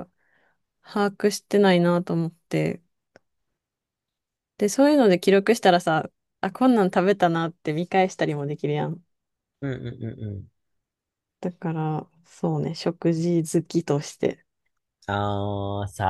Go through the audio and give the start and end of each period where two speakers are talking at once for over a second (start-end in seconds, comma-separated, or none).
none